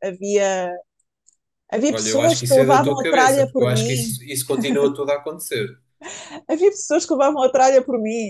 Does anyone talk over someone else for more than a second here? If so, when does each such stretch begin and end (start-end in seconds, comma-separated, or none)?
1.9-4.2